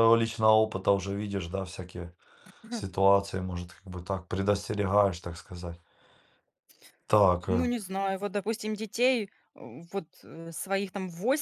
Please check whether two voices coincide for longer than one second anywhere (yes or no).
no